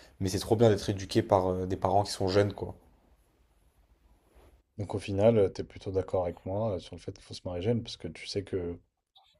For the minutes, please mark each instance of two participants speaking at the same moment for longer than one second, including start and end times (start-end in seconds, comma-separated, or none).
none